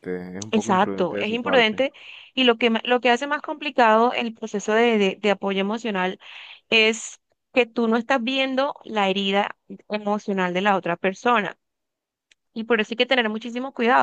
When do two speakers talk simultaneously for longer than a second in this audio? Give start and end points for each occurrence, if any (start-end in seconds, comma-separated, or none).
0.5-1.8